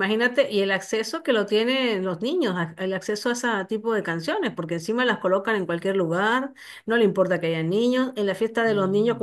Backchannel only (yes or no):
yes